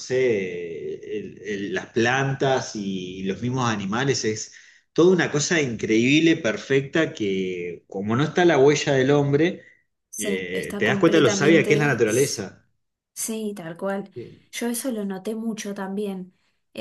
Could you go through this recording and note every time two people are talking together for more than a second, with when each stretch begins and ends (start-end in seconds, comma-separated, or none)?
10.2-12.0